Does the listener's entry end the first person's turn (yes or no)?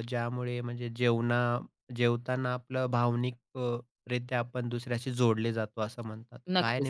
yes